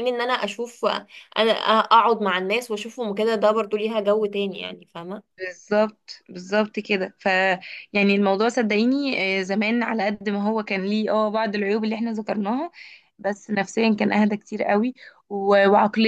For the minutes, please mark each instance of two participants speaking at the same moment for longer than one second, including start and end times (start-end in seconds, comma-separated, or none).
none